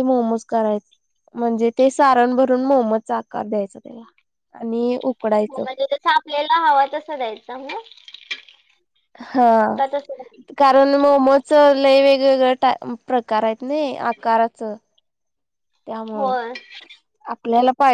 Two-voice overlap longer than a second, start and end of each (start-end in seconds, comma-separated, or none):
none